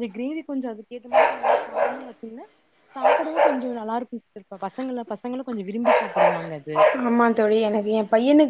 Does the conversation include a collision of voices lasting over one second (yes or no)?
no